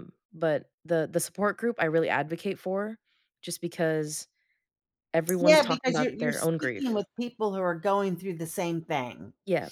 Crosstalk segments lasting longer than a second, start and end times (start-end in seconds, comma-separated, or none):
5.4-7.0